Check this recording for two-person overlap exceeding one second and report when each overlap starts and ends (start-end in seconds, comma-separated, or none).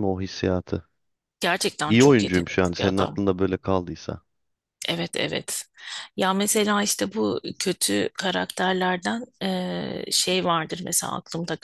1.9-3.2